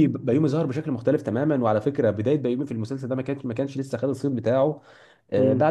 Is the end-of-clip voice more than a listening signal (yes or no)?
no